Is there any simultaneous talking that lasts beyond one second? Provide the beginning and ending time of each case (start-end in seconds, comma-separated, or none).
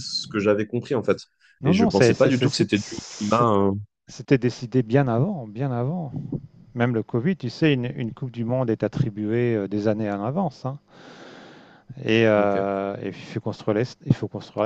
1.6-3.5